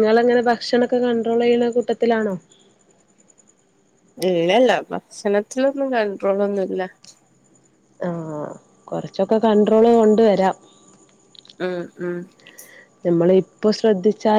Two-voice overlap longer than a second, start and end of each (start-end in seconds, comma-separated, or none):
none